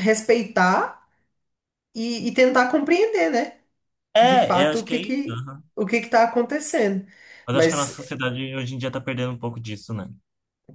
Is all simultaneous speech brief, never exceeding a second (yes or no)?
no